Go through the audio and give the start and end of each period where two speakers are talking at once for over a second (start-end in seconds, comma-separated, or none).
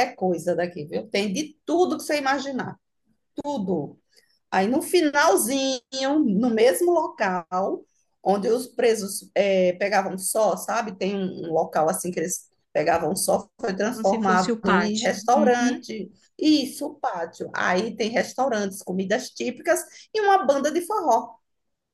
13.9-15.8